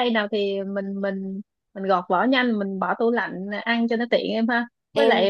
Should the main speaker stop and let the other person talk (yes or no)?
no